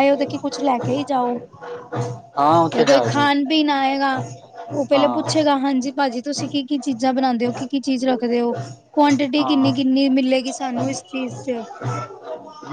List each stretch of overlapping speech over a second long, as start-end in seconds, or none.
none